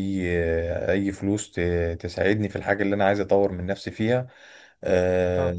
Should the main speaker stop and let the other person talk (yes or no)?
no